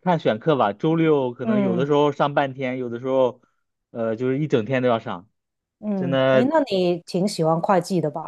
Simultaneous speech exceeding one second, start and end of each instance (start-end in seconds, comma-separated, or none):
none